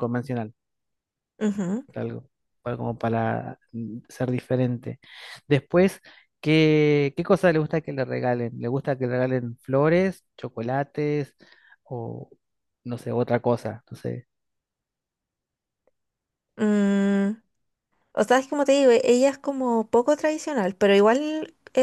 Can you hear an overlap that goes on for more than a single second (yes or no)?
no